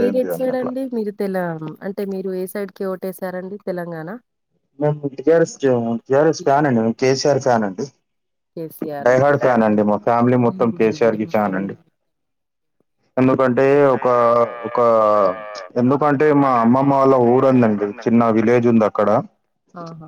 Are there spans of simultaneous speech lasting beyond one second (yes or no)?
yes